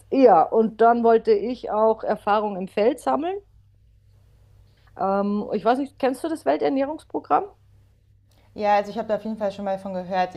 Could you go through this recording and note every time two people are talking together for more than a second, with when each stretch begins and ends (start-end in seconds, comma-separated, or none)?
none